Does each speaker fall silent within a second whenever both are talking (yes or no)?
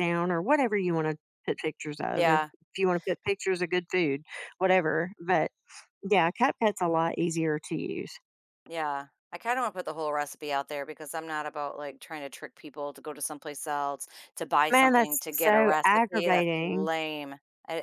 no